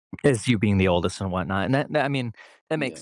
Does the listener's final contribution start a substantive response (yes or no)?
no